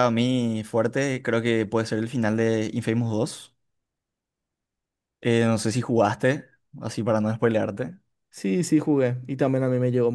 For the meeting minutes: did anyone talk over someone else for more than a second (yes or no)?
no